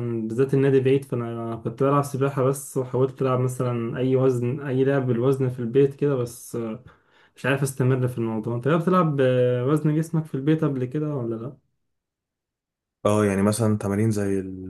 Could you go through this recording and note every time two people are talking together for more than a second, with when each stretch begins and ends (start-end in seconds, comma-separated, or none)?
none